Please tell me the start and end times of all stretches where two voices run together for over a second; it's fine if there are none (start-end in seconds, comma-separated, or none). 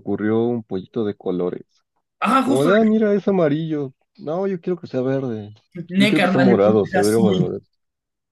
6.0-7.4